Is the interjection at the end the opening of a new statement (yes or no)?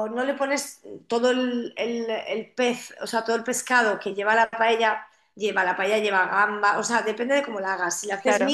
no